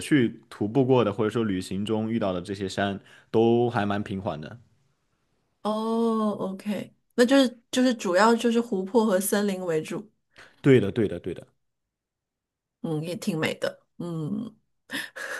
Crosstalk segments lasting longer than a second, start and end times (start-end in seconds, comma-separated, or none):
none